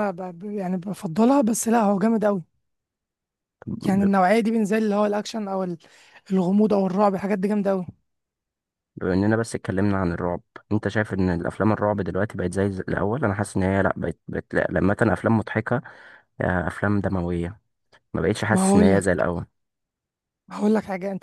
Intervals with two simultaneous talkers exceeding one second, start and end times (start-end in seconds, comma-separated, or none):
none